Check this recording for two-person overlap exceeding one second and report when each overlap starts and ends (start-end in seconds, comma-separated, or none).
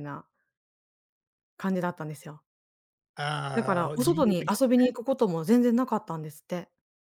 3.5-4.9